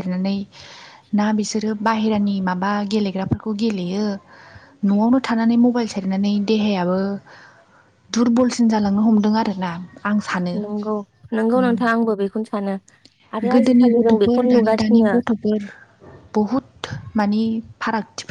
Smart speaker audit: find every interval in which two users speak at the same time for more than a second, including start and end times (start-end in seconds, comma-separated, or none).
13.5-15.1